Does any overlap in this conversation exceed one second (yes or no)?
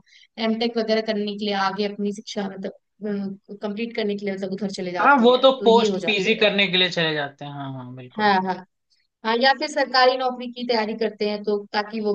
yes